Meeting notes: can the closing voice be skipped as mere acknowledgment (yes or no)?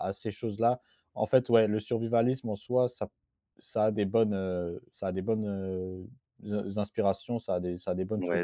no